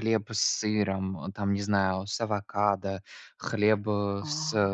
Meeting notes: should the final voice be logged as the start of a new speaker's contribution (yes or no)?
no